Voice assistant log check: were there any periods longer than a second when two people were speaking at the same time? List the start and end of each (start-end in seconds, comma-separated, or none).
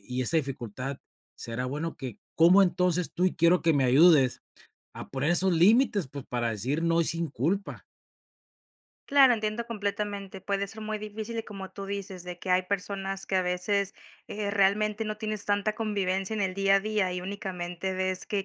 none